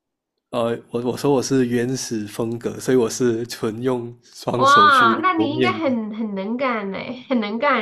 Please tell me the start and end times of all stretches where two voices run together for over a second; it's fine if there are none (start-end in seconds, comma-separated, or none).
4.6-6.0